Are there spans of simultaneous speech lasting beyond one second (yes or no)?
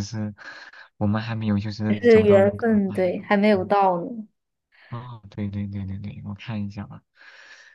yes